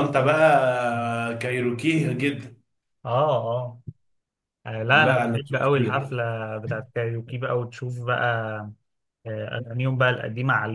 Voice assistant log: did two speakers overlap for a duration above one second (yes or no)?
yes